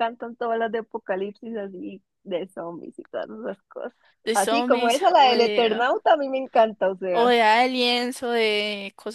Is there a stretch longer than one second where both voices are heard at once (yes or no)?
yes